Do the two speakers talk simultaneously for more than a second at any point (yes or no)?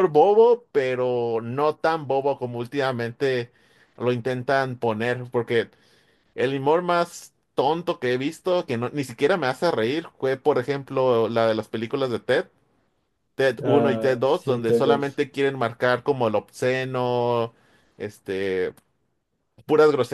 yes